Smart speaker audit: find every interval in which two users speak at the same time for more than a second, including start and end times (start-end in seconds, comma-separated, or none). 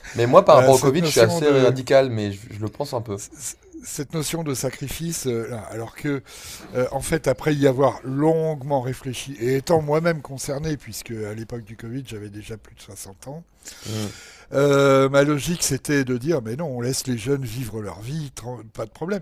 0.5-1.8